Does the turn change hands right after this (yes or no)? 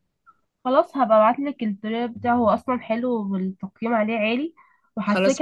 no